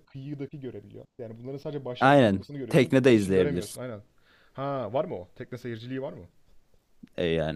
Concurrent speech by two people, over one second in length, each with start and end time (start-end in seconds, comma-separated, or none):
2.0-3.8